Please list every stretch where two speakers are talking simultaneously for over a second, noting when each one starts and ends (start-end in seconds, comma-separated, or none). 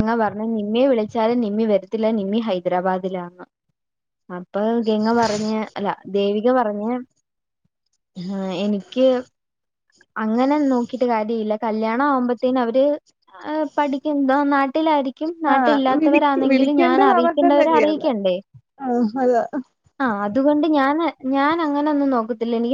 15.5-18.0